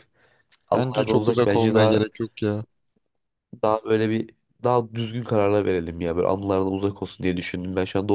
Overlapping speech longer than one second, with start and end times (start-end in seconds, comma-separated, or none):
0.7-2.0